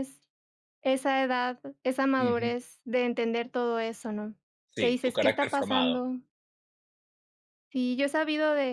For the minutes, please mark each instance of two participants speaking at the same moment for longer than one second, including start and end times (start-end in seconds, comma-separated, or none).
4.8-6.0